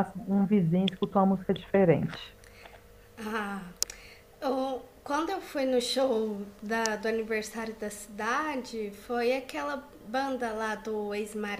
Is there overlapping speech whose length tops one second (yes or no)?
no